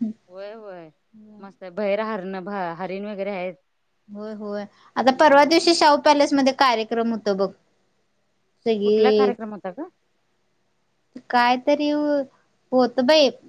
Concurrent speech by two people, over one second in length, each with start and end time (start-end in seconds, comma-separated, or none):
none